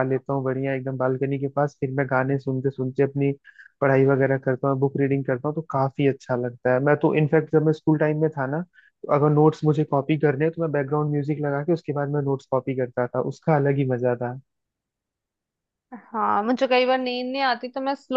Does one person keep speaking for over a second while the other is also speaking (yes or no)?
no